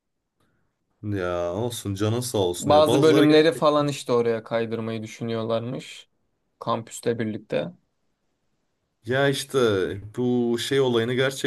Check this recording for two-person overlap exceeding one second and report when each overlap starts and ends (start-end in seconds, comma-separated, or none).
2.6-3.9